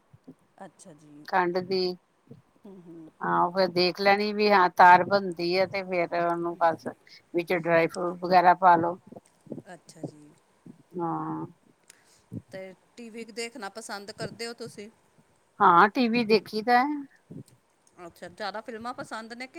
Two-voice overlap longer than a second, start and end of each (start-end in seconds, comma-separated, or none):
none